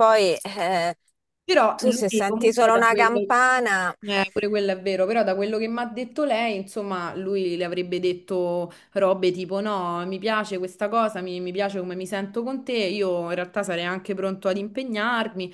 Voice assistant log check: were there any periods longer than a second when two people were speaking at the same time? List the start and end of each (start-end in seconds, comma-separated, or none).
1.8-3.2